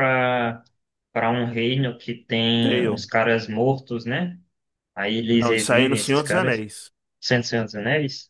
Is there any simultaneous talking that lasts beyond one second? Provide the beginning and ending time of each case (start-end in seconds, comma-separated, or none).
5.3-6.7